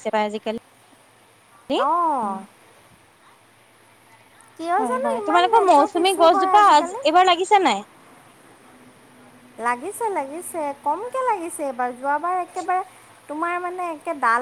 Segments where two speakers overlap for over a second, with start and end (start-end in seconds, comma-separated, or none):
4.8-7.0